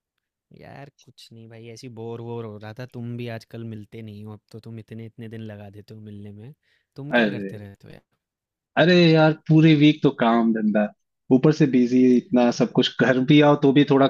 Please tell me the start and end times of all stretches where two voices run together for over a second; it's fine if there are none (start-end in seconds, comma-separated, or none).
none